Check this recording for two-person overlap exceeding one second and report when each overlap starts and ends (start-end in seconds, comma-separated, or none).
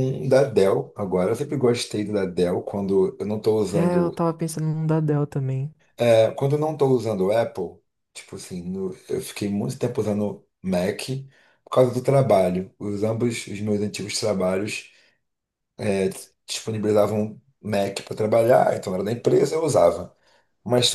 none